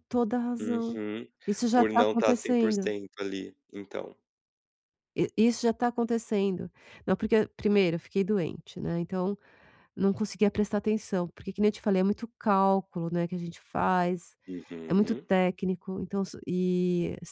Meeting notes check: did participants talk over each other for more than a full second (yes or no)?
yes